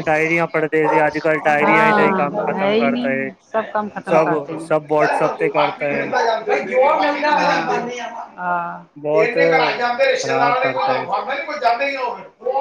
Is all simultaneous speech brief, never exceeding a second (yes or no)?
no